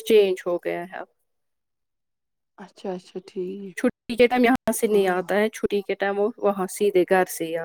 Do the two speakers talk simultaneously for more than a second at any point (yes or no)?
no